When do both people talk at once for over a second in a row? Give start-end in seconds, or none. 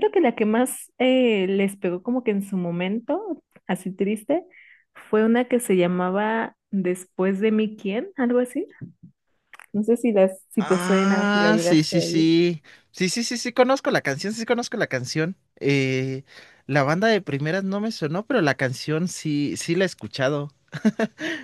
10.6-12.3